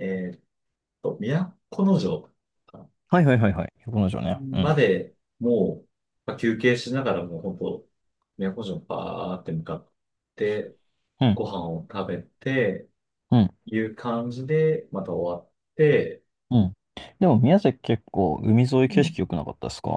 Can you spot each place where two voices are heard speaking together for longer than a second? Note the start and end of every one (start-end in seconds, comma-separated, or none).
none